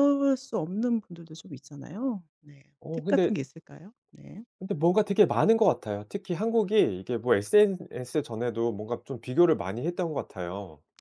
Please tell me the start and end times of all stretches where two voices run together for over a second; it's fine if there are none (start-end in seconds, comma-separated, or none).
none